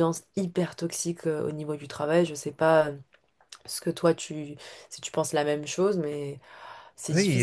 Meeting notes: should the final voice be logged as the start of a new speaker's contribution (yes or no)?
yes